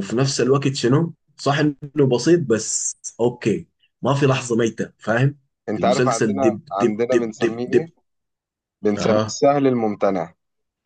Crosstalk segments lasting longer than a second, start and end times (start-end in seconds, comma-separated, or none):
5.8-7.9